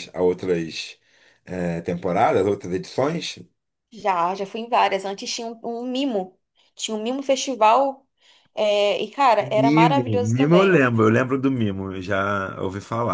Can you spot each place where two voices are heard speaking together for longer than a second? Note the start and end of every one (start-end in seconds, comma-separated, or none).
9.4-10.9